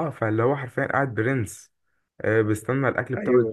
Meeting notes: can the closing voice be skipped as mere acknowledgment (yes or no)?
yes